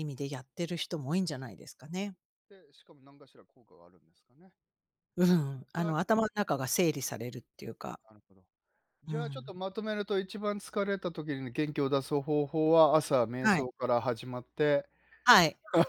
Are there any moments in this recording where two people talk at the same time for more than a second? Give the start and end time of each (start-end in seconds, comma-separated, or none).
none